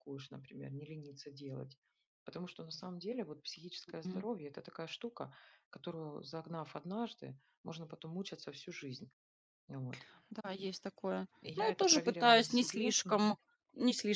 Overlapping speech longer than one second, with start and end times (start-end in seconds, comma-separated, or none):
11.4-13.3